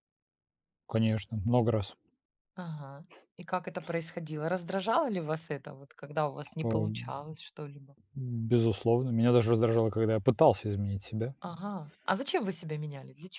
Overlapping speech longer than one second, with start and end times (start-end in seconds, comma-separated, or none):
none